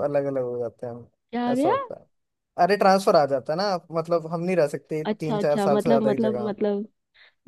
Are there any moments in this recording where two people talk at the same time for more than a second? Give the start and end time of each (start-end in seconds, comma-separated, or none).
5.1-6.5